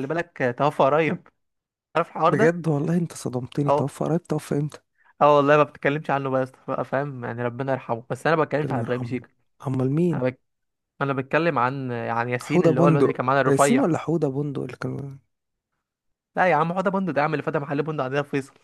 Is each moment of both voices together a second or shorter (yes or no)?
no